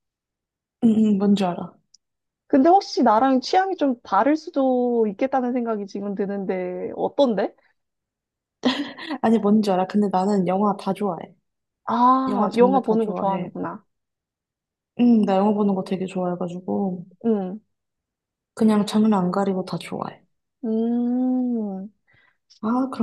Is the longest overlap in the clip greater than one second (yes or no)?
yes